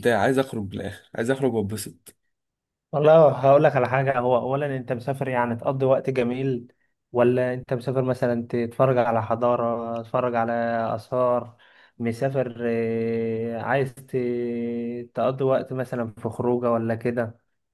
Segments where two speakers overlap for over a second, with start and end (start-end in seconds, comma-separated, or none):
none